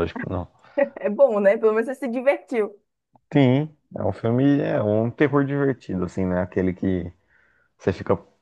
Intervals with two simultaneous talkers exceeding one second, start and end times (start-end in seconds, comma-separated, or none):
none